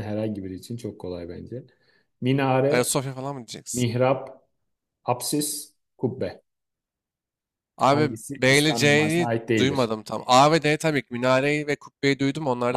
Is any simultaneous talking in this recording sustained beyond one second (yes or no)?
yes